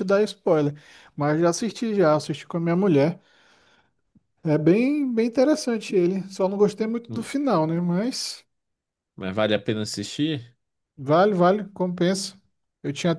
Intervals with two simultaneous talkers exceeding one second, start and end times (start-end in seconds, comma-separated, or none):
none